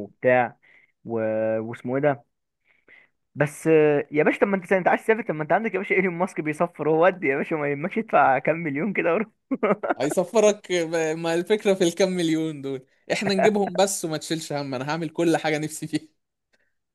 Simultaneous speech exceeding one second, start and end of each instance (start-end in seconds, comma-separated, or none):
none